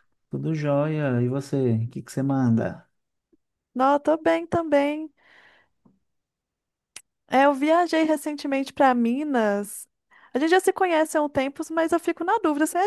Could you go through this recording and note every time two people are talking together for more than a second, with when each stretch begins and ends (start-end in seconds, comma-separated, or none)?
none